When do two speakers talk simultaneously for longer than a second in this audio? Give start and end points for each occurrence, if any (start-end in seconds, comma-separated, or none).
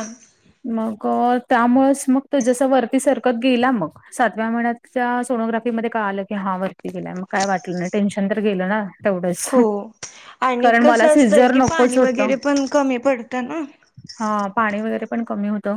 none